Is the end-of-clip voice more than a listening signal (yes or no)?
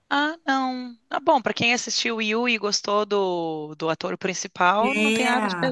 yes